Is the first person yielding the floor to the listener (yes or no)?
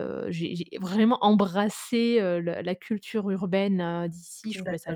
no